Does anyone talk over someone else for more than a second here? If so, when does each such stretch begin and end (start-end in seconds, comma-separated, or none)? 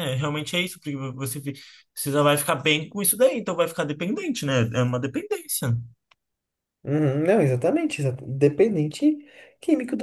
none